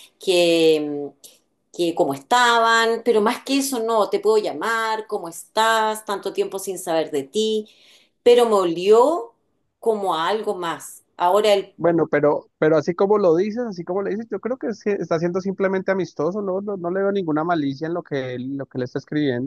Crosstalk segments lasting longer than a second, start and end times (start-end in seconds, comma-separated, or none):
none